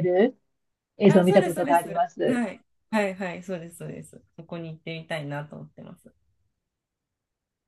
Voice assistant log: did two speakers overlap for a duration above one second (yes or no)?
yes